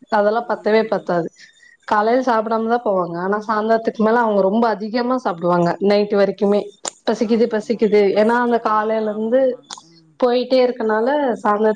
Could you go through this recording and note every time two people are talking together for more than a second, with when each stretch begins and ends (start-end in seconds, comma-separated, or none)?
7.3-9.4